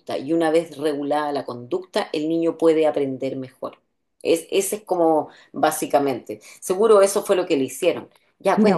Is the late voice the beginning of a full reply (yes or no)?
yes